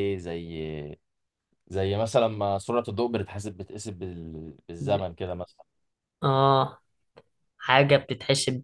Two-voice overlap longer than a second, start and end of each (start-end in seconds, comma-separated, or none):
none